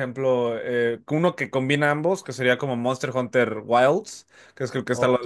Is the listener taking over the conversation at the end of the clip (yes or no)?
no